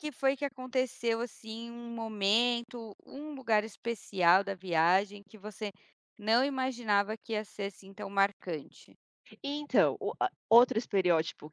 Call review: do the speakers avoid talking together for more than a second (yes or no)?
yes